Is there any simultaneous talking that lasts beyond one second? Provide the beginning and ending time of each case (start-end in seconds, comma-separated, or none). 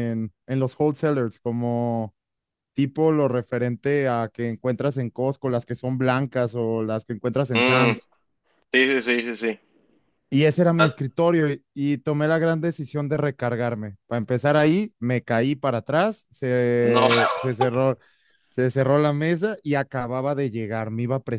none